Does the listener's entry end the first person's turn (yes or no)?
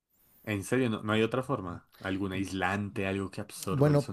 yes